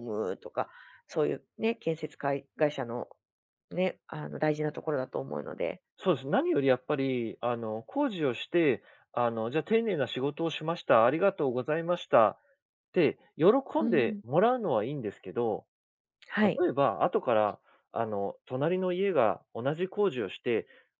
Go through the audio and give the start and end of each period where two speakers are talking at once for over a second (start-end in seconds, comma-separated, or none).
none